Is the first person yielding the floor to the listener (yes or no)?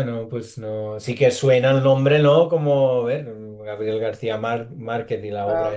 yes